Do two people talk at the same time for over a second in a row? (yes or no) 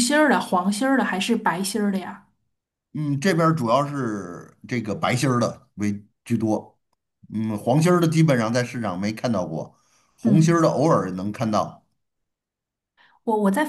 no